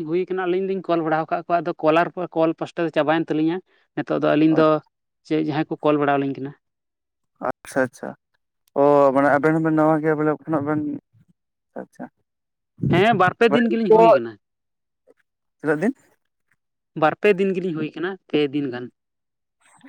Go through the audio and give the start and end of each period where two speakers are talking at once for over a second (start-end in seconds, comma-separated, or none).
none